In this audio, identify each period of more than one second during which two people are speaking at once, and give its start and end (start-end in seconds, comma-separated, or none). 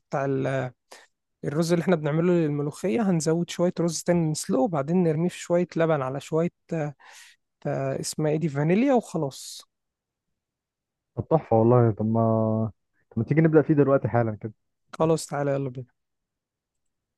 none